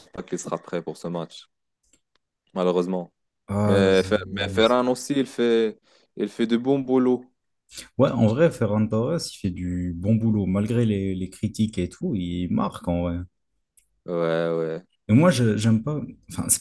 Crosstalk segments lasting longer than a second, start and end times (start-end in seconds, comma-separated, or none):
none